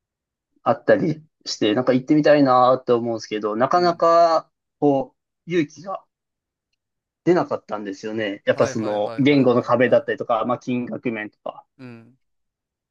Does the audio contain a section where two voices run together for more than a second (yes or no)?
yes